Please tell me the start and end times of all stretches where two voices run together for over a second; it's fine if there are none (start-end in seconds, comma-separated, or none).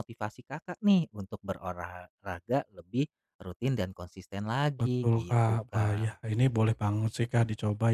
4.8-6.2